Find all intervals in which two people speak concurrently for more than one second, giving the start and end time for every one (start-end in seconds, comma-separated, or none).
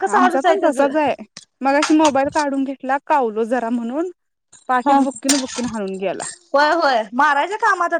none